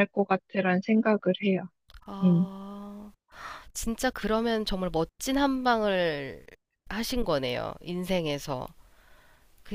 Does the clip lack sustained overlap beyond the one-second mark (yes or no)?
yes